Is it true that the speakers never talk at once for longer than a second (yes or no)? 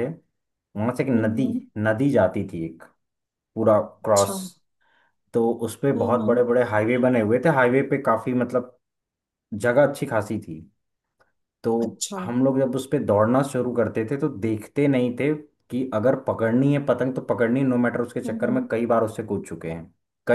yes